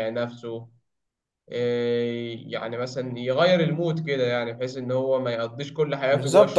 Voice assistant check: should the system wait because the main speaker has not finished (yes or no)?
no